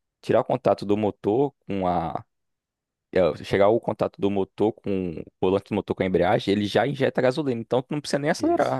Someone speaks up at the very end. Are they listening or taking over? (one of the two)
taking over